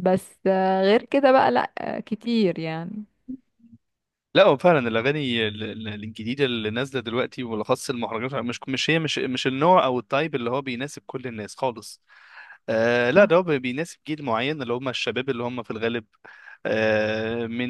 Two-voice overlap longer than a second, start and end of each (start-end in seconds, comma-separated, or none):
none